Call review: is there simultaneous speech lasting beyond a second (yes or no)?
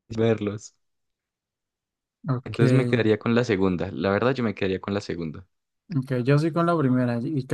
no